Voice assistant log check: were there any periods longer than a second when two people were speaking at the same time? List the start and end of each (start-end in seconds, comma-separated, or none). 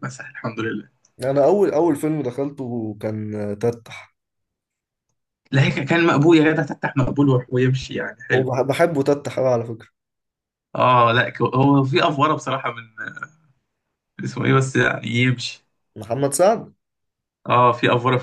none